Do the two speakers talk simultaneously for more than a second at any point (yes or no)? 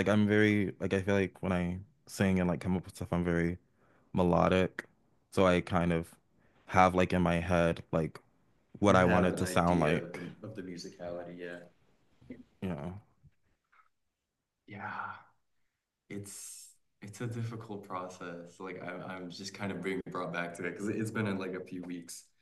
yes